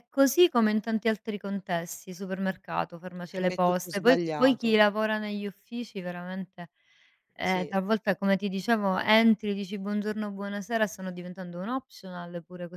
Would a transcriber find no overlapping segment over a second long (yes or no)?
no